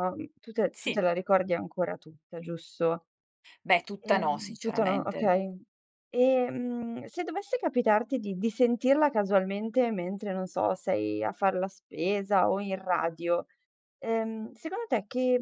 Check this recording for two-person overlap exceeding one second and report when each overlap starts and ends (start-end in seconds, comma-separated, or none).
4.0-5.3